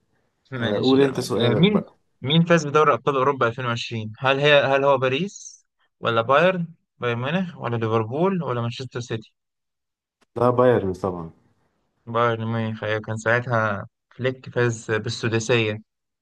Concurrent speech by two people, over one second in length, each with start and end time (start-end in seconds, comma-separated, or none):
0.6-1.8